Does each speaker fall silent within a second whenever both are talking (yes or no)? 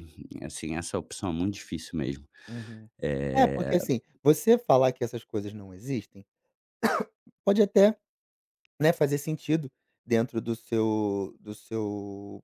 yes